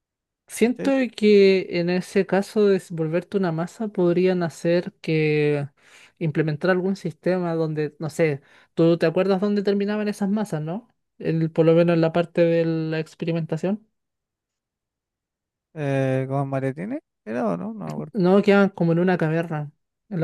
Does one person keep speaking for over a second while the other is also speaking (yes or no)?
no